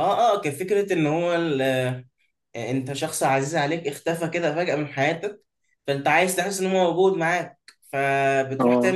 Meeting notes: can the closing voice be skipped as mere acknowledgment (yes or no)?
yes